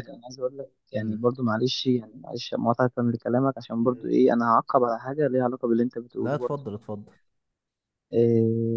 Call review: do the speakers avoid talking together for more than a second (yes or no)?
yes